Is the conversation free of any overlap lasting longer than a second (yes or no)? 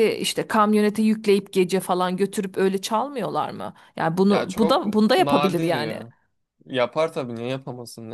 no